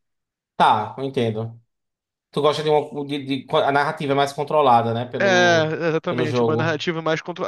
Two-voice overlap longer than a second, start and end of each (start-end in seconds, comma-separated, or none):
5.2-6.8